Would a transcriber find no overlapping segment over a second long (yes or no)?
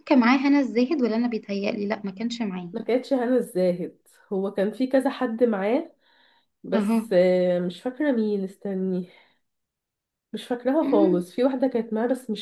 yes